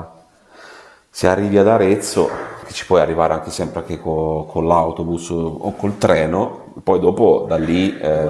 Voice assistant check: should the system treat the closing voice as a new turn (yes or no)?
yes